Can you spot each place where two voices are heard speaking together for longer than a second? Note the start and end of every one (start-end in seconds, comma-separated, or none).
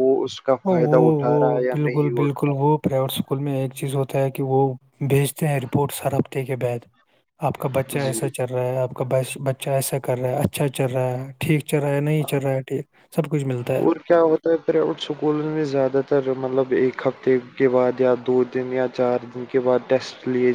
0.6-2.5